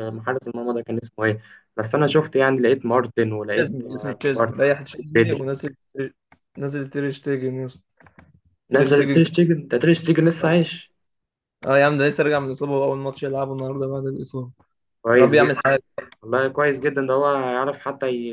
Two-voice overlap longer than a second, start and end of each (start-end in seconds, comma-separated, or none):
3.5-5.4